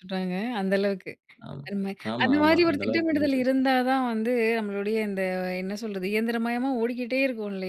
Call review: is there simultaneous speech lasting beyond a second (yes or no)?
yes